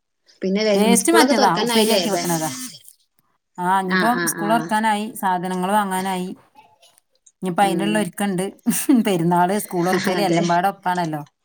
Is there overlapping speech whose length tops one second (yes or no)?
yes